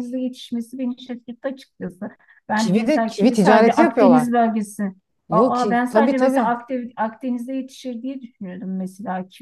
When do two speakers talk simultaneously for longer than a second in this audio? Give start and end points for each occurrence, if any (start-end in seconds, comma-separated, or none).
2.6-4.3, 5.3-6.5